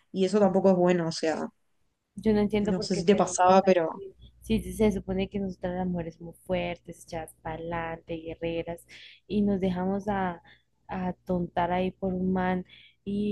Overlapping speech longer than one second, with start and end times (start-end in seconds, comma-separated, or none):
2.6-4.0